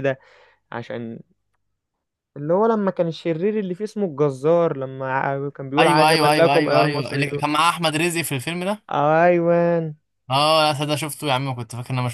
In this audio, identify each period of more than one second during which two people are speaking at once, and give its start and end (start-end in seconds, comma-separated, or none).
5.8-7.4